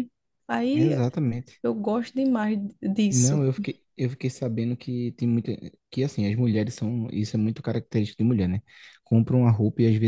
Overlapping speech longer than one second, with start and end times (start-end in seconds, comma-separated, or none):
none